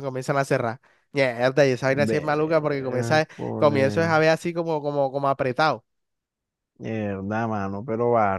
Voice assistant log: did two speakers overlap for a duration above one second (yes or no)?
yes